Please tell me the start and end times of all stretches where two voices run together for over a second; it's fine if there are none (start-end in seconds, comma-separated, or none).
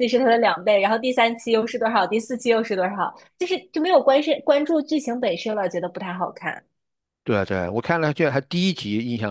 none